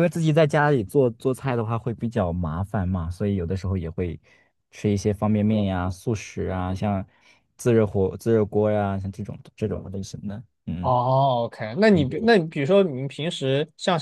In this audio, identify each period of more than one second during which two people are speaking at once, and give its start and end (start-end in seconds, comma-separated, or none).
none